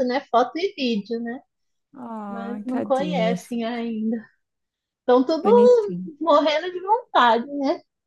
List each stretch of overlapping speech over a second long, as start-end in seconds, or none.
2.3-3.5